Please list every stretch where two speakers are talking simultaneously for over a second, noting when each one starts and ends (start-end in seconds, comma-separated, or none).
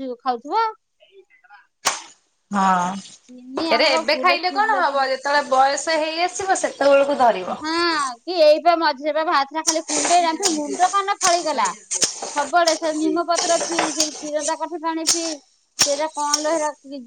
3.3-5.0